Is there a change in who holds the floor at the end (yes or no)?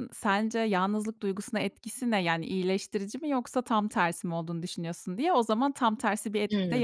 yes